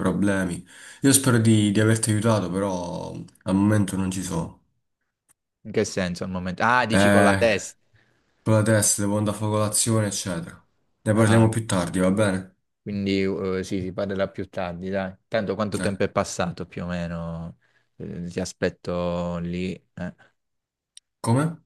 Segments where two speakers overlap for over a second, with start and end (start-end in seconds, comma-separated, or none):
none